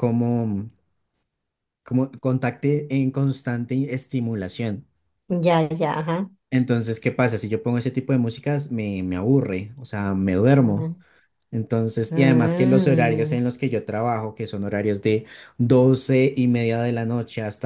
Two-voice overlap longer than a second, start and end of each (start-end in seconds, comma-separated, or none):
12.1-13.4